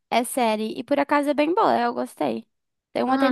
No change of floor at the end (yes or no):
no